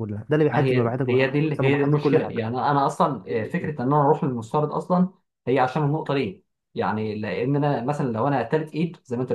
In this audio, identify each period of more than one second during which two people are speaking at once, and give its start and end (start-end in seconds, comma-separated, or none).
0.5-2.4